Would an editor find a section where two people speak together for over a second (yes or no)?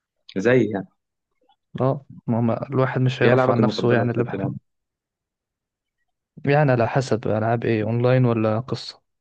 yes